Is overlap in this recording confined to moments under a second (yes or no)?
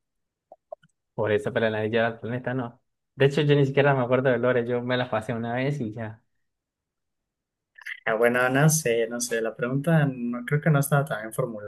yes